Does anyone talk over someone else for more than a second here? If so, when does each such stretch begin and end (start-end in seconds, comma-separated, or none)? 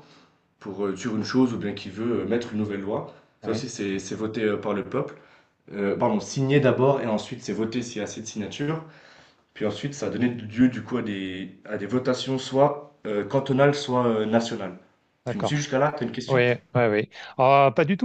none